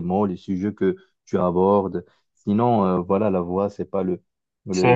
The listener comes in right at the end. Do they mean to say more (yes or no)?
yes